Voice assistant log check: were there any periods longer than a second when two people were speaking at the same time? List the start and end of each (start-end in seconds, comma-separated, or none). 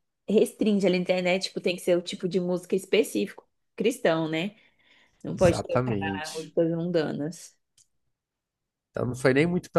5.3-6.5